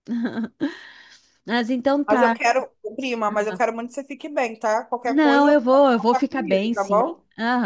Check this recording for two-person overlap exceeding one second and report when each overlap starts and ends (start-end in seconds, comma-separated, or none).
5.0-7.0